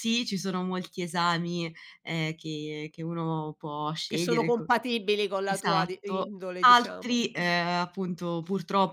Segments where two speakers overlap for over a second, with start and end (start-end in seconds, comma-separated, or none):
5.4-7.5